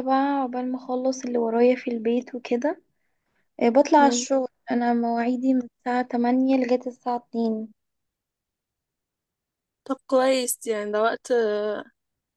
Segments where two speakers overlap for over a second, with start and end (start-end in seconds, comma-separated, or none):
none